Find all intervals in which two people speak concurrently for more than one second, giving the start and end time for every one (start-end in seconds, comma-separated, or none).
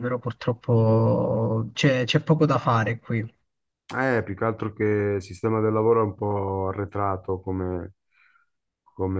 none